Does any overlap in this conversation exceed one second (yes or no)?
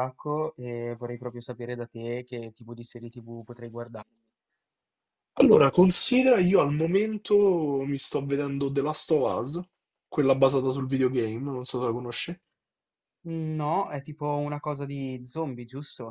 no